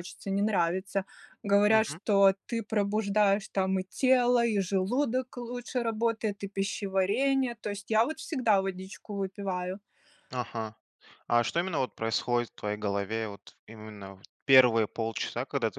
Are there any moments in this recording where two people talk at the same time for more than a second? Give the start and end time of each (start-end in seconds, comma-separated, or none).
none